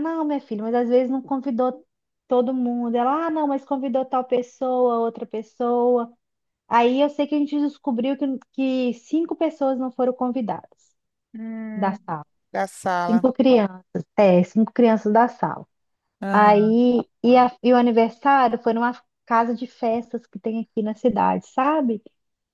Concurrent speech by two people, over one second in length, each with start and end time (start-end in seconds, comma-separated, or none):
none